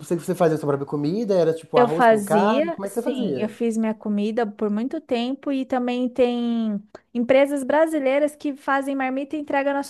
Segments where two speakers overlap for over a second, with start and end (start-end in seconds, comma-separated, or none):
1.8-3.5